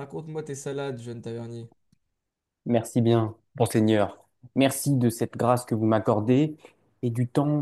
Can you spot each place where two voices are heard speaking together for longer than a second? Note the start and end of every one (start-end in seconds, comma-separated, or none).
none